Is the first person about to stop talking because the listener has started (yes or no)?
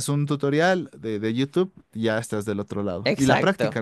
yes